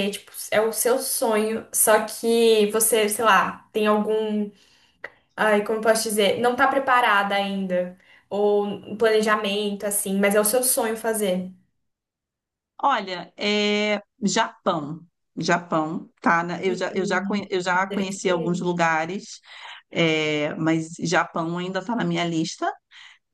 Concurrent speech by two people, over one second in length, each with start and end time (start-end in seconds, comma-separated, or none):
16.6-18.8